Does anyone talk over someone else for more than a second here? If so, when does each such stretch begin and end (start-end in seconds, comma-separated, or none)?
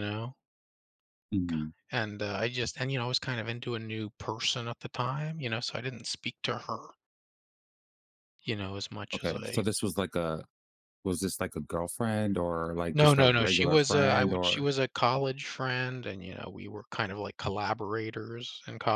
12.9-14.7